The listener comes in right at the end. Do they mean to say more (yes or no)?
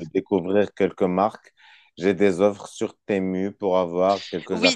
yes